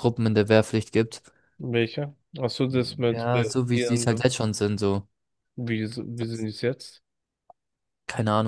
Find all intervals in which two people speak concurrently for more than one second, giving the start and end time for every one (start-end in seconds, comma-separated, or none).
3.1-4.4